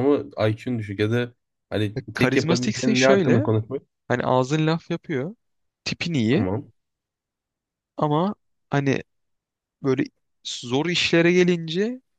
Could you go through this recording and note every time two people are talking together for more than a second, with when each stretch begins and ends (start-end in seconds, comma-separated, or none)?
2.0-3.5